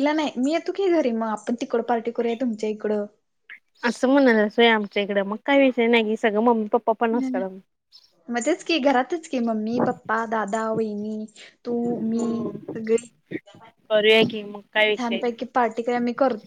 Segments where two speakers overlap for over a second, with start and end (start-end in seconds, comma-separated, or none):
none